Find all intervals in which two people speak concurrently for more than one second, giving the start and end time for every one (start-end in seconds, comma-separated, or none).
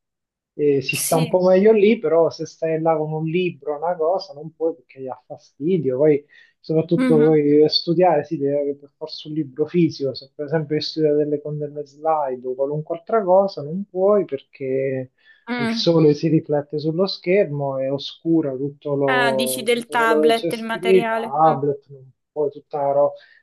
19.1-21.3